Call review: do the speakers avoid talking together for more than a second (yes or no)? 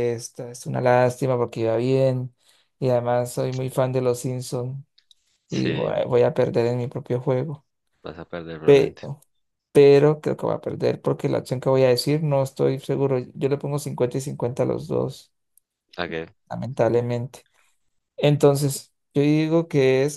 yes